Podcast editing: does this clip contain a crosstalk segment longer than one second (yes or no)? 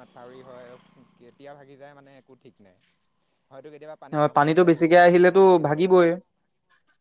yes